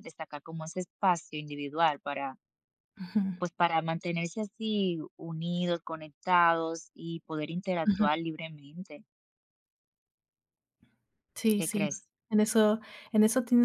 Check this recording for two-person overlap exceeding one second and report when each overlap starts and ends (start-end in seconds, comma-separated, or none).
none